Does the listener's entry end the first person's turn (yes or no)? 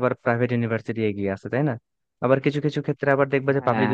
no